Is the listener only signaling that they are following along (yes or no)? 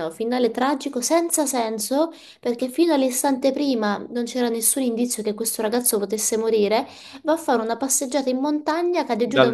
yes